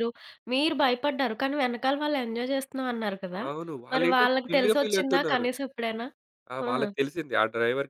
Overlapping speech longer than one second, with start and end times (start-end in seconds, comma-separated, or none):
3.9-5.5